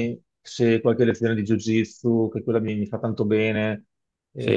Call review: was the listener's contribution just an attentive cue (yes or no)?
no